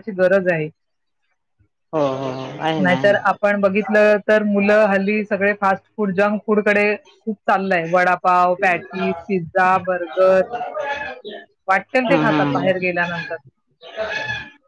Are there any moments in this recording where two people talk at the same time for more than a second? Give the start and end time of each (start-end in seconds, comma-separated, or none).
none